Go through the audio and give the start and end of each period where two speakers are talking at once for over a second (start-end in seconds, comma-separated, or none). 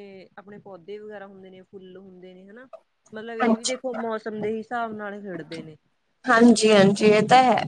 none